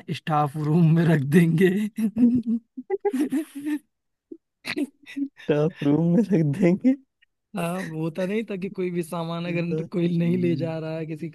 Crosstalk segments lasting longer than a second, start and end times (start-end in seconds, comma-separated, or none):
9.5-10.8